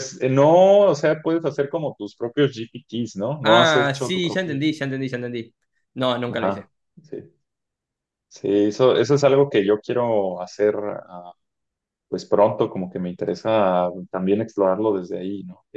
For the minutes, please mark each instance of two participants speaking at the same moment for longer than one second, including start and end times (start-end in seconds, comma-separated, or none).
3.5-4.9